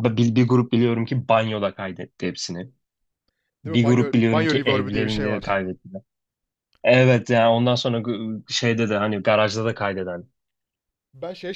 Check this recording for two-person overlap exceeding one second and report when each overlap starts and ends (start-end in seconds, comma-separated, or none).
3.6-5.4